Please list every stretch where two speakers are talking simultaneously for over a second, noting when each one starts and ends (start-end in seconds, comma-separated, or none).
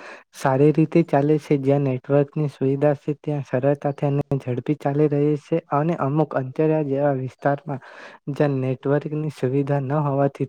8.4-9.7